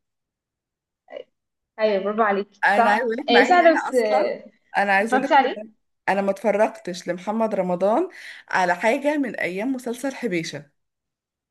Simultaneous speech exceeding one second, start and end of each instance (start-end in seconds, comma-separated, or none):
2.6-4.3